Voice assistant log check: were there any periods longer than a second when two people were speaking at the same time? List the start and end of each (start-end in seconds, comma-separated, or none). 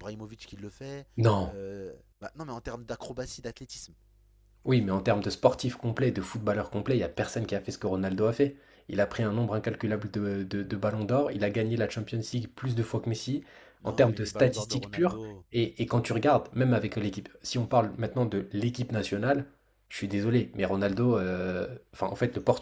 13.8-15.4